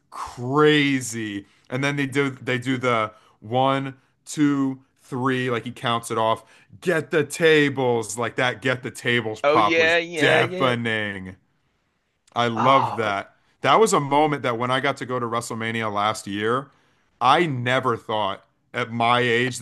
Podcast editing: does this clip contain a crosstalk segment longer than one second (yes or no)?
yes